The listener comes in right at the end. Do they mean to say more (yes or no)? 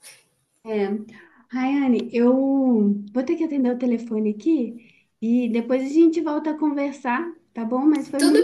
yes